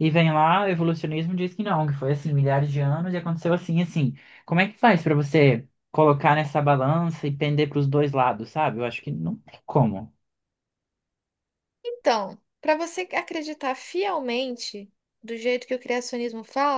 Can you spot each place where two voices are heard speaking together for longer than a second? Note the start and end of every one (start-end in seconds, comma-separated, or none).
none